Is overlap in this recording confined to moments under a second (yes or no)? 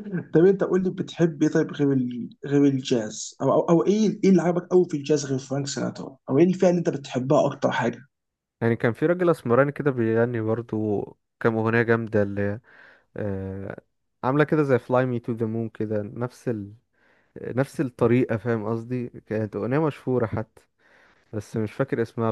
yes